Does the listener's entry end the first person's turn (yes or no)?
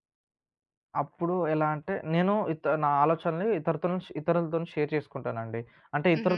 no